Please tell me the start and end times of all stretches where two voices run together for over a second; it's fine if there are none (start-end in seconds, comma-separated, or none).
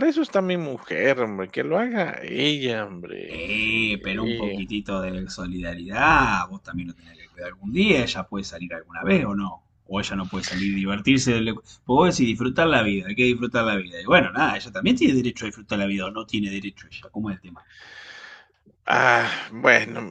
3.3-4.6